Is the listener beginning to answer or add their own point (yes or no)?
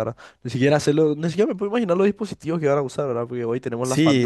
no